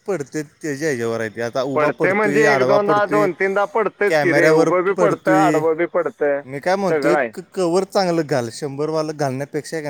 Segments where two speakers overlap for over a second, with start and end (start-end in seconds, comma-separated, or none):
1.7-3.3, 4.1-5.6